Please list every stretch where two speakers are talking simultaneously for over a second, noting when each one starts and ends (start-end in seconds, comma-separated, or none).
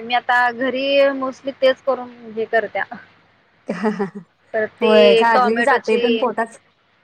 4.8-6.3